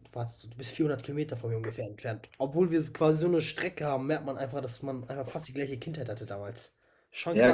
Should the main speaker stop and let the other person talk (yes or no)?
yes